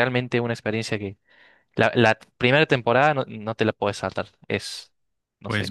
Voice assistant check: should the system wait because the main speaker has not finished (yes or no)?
no